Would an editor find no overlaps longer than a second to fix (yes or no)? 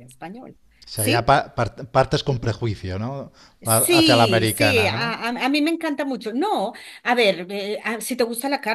no